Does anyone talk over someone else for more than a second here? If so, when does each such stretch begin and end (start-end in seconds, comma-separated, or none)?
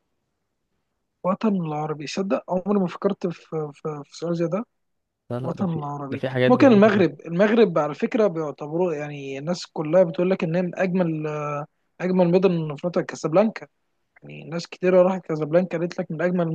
5.4-7.2